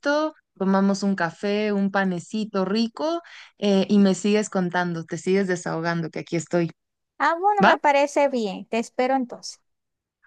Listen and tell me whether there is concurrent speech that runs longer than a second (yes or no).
no